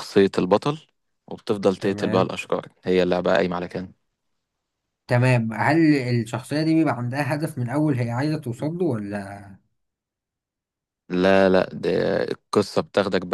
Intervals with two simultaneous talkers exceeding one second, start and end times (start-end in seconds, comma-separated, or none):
none